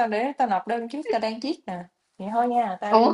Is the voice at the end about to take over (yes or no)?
yes